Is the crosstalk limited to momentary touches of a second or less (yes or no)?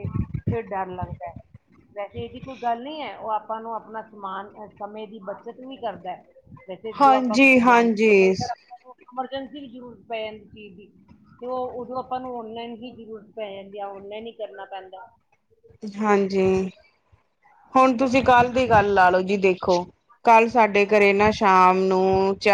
yes